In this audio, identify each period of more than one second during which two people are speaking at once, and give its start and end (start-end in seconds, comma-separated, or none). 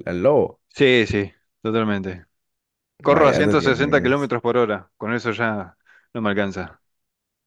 3.0-4.3